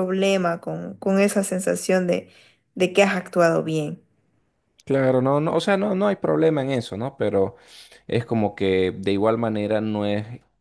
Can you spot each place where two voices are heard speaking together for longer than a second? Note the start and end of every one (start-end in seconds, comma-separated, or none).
none